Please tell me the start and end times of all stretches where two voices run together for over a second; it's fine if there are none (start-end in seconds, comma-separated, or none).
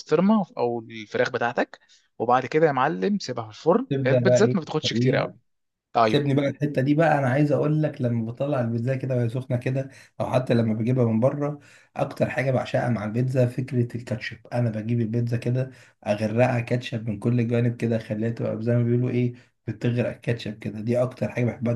3.9-5.3